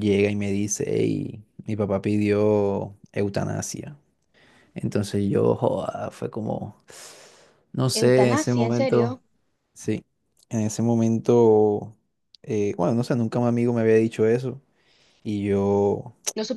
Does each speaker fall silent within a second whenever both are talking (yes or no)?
no